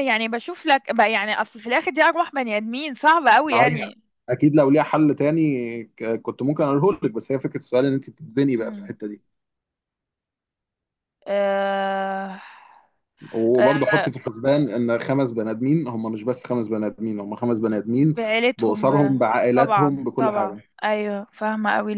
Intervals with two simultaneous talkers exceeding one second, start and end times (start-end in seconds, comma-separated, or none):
18.6-20.6